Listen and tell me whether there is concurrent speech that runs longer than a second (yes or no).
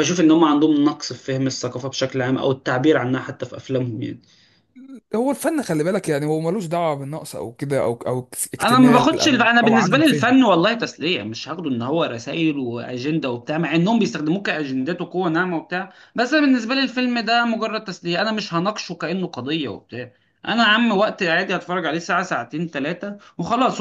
yes